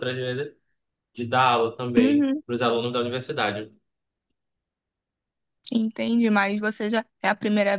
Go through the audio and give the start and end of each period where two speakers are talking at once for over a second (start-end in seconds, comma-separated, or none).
none